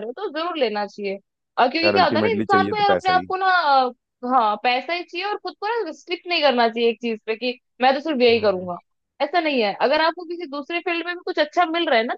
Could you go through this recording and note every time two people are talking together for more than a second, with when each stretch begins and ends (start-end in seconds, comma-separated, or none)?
1.8-3.3